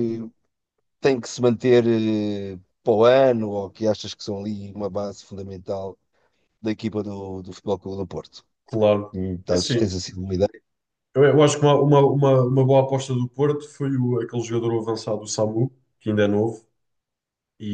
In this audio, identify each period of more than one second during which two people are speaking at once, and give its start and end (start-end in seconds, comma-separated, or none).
none